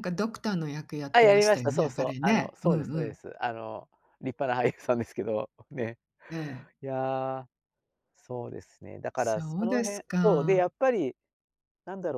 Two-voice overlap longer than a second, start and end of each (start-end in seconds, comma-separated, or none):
1.1-3.2, 9.2-10.7